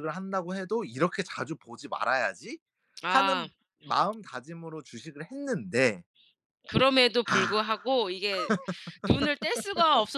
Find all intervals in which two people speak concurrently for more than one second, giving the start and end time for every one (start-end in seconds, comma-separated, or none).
none